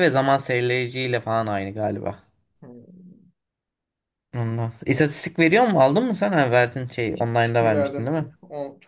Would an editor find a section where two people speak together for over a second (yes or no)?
yes